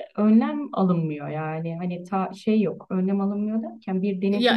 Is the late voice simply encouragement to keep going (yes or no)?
yes